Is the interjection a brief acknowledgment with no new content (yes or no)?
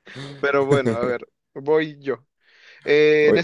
yes